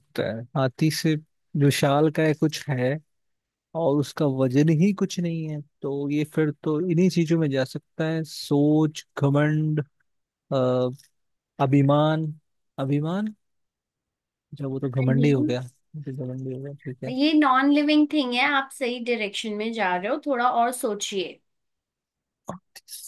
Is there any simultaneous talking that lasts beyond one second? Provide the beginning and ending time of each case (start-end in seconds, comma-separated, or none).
none